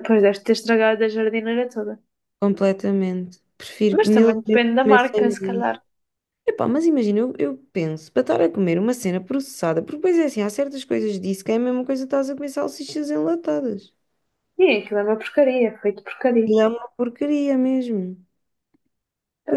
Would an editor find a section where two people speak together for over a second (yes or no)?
yes